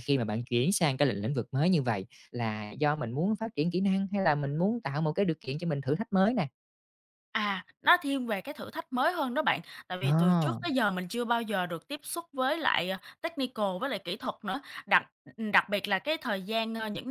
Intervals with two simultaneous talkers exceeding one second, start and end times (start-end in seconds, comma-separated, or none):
none